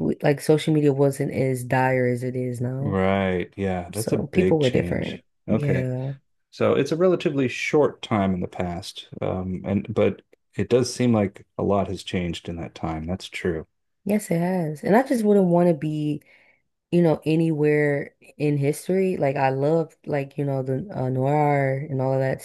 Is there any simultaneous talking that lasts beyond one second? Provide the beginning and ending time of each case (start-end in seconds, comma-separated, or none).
4.0-5.9